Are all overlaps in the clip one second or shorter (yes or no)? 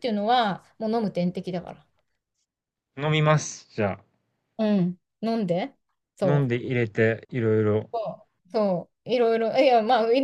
yes